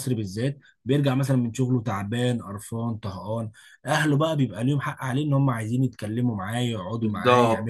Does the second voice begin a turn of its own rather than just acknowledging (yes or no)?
yes